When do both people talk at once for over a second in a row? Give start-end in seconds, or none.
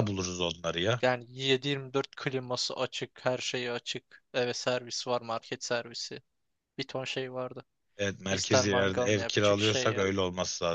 8.3-10.1